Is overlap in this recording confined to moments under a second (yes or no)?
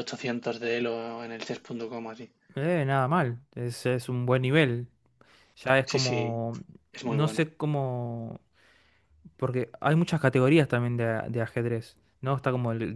yes